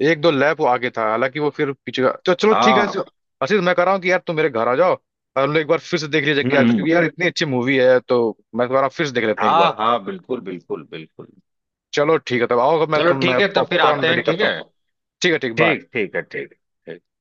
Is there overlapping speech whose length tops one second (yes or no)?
yes